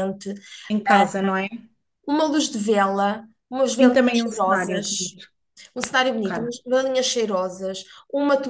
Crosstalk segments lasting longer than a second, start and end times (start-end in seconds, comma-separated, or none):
3.8-5.1